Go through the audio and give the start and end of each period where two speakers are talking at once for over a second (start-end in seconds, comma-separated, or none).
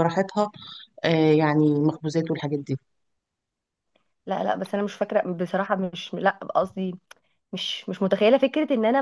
none